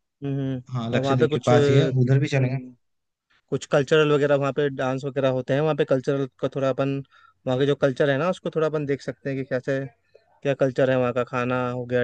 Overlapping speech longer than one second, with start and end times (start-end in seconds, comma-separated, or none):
0.7-2.6